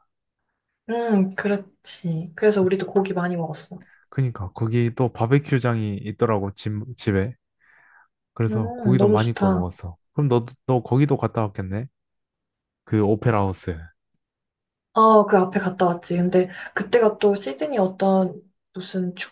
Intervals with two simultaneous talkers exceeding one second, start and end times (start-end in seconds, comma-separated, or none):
8.5-9.7